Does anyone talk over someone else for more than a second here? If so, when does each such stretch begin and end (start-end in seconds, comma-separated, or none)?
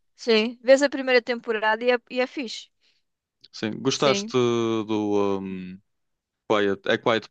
none